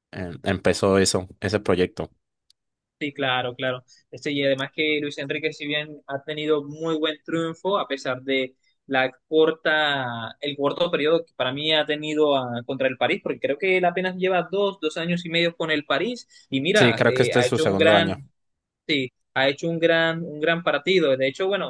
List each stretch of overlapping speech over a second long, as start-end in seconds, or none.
16.7-18.2